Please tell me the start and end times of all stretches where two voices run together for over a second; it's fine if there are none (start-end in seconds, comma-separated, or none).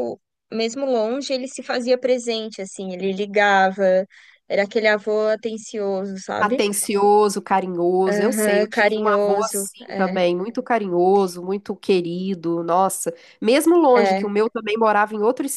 8.1-10.2